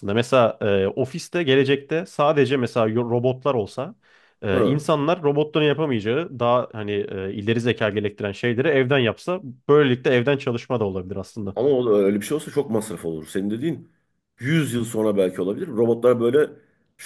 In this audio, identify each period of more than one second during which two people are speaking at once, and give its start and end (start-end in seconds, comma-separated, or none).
none